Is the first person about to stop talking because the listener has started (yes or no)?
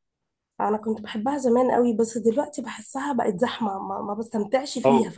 yes